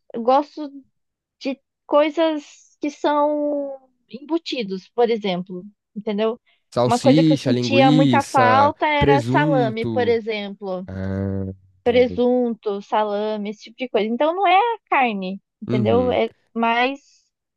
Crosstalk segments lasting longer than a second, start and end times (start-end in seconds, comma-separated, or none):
6.8-10.2